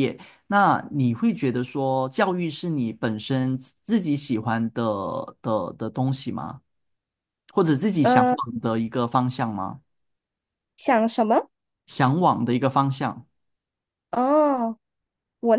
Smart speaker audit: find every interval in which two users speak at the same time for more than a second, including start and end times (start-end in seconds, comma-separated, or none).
none